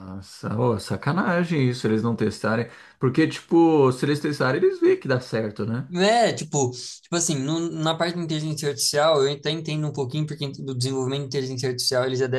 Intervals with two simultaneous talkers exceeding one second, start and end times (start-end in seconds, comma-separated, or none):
none